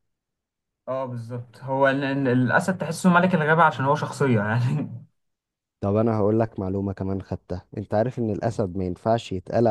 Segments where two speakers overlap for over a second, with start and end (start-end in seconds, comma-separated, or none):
none